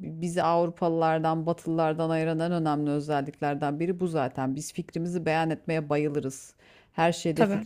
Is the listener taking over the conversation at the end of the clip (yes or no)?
no